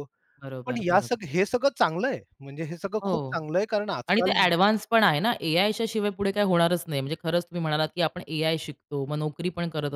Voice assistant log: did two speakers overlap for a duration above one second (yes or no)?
no